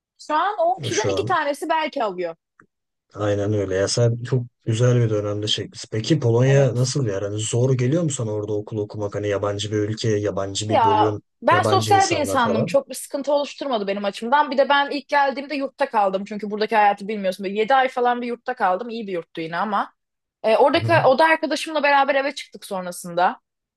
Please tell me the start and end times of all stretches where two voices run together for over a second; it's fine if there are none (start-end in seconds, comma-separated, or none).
10.7-12.8